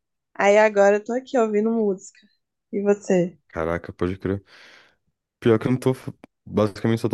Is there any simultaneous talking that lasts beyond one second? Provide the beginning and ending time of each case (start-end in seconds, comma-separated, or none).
none